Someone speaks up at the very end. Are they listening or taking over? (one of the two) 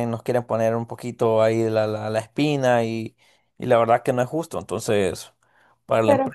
listening